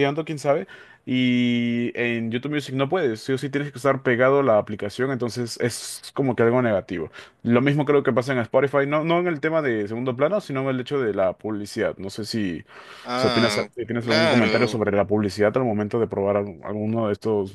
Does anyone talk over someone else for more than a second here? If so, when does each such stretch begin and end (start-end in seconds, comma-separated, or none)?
13.2-14.8